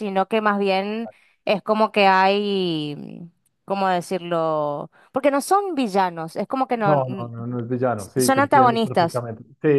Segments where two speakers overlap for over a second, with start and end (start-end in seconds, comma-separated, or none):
8.0-9.2